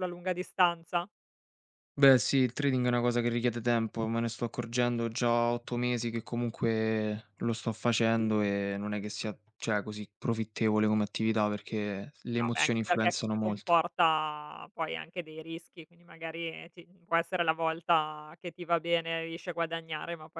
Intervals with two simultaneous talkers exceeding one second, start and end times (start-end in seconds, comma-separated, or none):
12.4-13.8